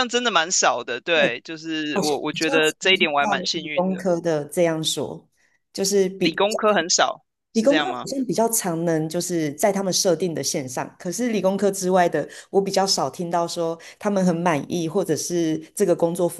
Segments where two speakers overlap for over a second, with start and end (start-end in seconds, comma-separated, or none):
1.9-4.0